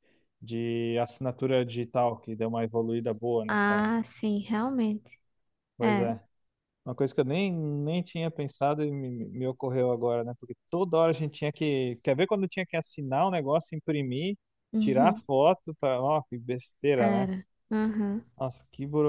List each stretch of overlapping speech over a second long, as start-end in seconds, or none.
none